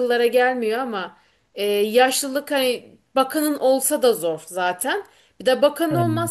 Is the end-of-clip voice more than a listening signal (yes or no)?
no